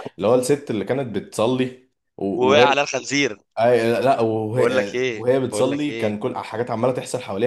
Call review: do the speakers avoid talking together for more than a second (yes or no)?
no